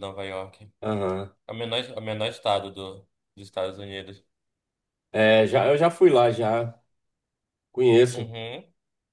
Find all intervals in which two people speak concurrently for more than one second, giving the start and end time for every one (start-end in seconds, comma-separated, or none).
none